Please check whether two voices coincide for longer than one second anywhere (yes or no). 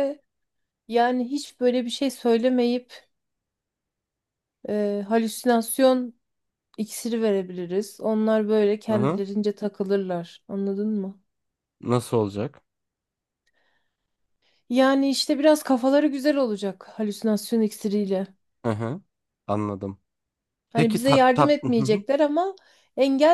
yes